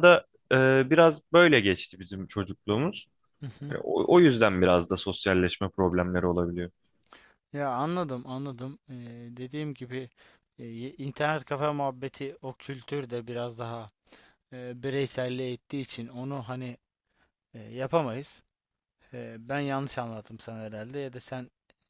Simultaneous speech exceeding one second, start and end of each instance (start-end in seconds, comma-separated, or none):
none